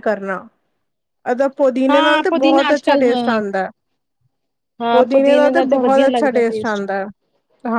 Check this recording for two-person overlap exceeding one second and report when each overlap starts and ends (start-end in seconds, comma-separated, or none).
1.9-3.4, 4.9-6.4